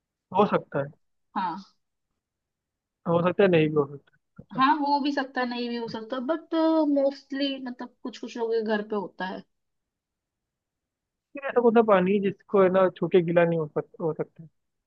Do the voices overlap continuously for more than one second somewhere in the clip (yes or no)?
no